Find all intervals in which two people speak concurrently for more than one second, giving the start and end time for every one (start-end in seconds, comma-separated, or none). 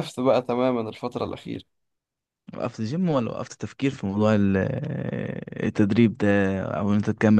none